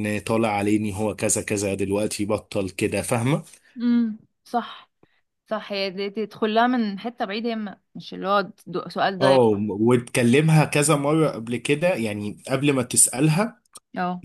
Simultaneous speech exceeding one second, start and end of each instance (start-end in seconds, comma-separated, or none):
none